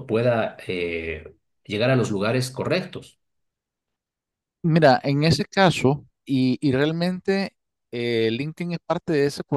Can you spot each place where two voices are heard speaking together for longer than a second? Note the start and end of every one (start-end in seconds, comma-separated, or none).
none